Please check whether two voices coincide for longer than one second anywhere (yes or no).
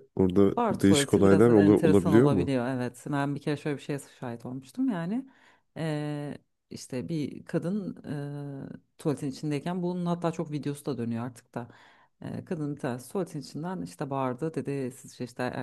yes